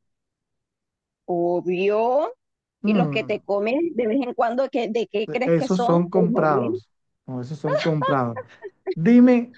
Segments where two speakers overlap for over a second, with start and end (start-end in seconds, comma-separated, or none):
5.5-6.7